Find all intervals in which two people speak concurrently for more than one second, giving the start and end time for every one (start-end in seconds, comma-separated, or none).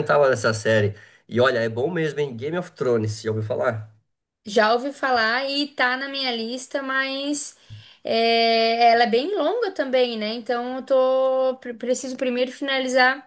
none